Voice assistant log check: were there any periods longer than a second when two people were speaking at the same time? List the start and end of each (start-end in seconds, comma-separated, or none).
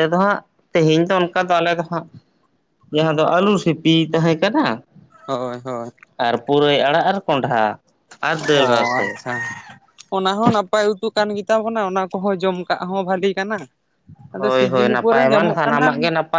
14.4-15.9